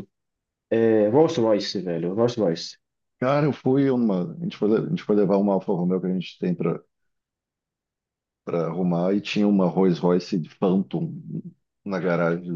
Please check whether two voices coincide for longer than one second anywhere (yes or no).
no